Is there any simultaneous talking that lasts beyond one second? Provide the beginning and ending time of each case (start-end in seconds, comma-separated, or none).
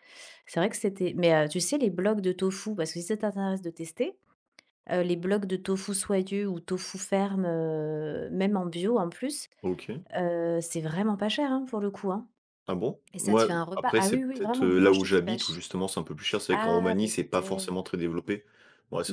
13.1-15.6, 16.5-17.8